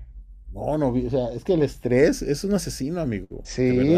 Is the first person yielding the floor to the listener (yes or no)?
yes